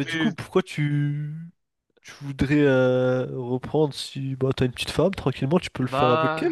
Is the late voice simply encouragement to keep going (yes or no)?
no